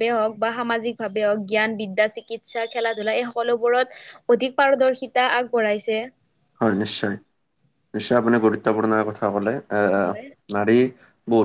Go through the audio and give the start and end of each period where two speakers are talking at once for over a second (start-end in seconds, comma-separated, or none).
none